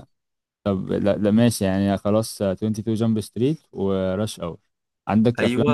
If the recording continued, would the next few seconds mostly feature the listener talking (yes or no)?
no